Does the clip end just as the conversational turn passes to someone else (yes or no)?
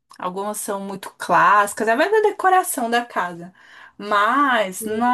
no